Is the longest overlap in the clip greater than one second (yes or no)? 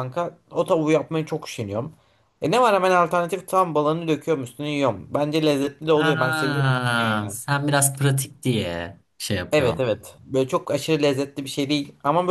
yes